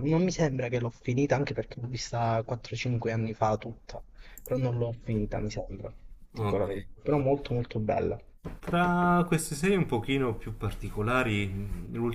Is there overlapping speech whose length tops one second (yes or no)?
no